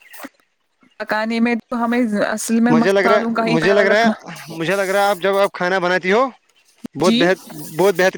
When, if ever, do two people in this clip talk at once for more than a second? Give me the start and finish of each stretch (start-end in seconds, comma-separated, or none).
2.7-4.1